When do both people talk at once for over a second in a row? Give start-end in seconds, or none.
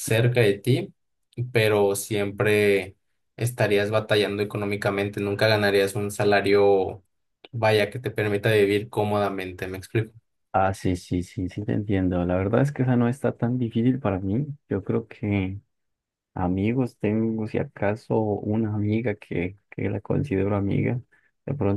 none